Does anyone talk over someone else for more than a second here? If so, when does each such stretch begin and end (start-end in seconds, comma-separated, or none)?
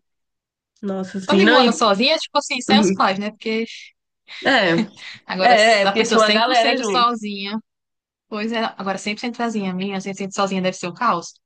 5.5-7.2